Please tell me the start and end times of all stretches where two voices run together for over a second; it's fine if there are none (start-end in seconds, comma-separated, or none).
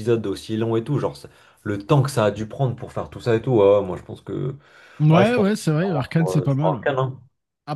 5.1-6.8